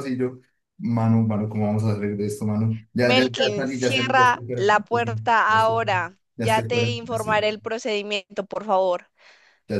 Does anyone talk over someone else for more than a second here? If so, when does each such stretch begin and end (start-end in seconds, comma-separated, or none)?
3.0-7.5